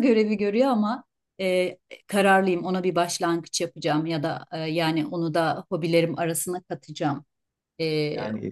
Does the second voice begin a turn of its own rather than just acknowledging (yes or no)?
no